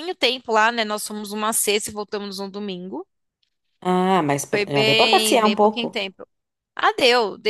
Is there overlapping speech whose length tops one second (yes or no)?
yes